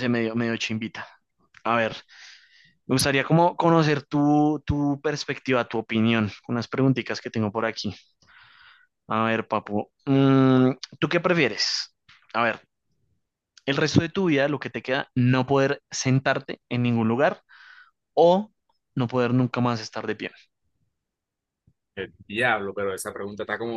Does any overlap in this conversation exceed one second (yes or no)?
no